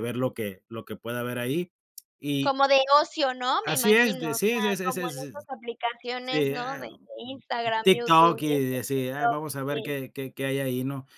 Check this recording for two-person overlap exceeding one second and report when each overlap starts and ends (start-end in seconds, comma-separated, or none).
3.6-5.3, 6.2-9.9